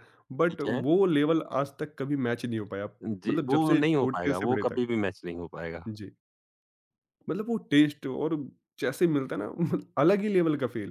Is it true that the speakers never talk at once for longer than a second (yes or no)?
no